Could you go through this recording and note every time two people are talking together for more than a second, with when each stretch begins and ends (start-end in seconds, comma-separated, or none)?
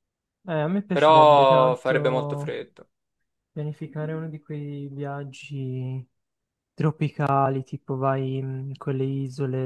0.9-2.5